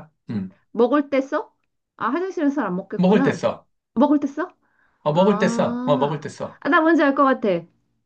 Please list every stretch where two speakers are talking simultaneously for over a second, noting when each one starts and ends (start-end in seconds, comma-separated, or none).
5.1-6.6